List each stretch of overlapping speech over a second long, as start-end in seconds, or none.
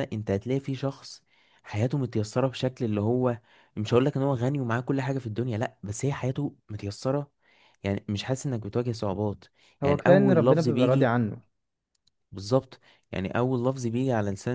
9.8-11.1